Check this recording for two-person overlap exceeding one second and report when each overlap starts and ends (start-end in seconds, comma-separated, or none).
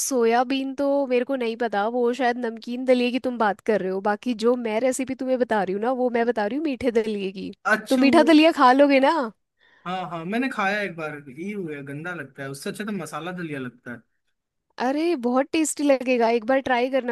none